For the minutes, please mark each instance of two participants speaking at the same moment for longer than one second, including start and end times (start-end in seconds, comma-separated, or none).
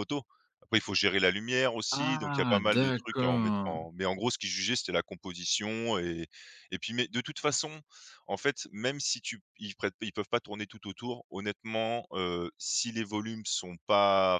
2.0-3.8